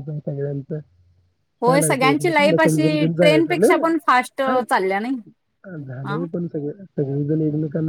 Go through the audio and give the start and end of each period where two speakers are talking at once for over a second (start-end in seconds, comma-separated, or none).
1.6-3.7